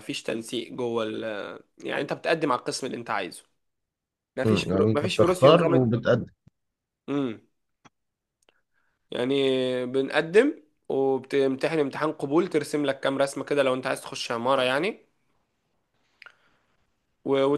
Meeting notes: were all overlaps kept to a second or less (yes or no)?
no